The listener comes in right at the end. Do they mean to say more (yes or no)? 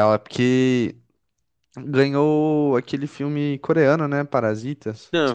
yes